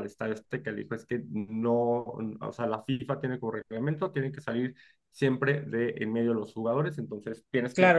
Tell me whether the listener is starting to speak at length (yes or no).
yes